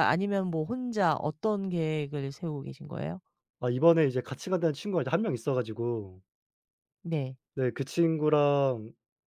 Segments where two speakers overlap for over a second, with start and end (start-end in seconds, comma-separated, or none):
none